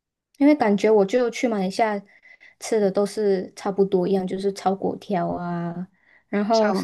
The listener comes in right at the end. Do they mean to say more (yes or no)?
no